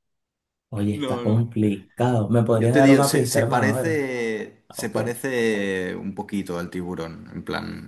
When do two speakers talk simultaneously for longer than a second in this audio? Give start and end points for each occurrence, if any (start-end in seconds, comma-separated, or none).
2.5-3.9